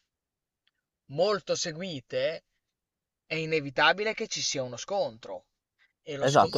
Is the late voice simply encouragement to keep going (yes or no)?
no